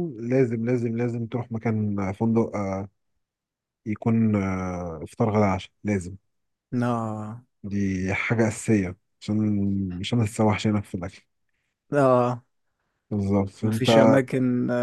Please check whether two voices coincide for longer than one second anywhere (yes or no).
no